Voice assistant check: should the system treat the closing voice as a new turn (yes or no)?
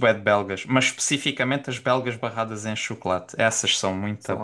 yes